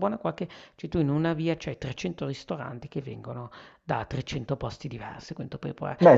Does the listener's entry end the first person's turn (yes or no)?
yes